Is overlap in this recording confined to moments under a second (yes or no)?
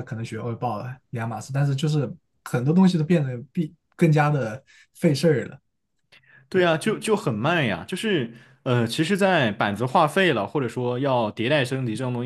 yes